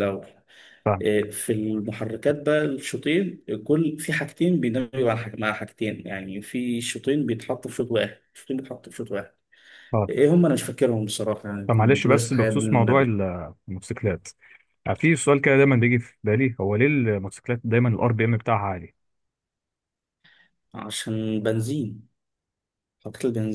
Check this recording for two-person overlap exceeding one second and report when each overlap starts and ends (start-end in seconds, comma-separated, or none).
11.7-13.2